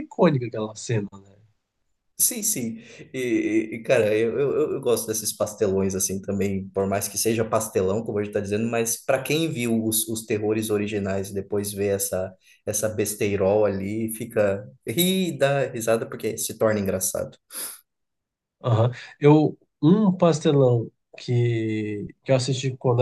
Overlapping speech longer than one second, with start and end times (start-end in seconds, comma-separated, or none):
none